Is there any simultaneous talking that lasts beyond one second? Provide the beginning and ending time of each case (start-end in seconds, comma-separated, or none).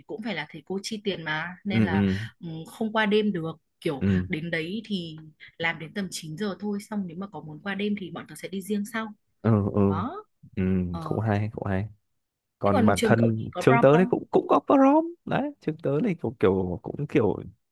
12.6-14.1